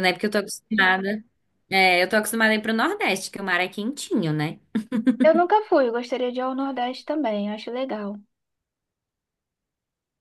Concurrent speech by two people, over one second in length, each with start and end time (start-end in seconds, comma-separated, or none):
none